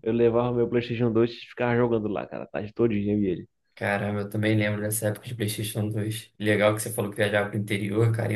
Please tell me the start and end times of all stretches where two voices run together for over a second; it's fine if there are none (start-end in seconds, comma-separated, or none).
none